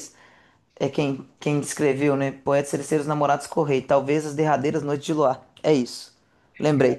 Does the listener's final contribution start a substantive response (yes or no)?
no